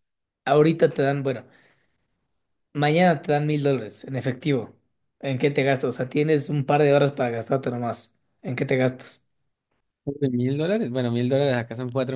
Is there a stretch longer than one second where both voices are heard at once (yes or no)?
no